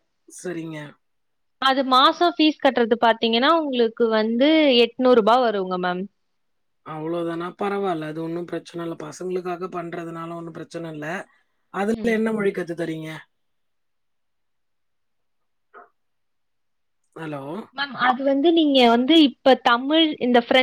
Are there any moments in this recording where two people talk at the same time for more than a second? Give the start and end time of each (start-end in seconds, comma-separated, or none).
none